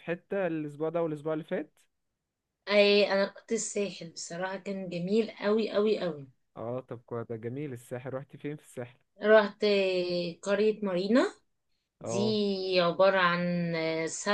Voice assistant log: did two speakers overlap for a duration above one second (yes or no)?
no